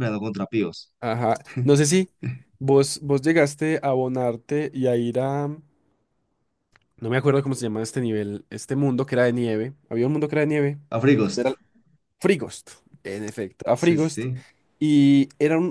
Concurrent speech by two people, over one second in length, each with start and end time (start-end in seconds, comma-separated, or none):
none